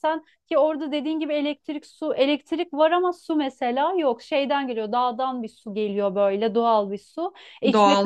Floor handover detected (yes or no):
no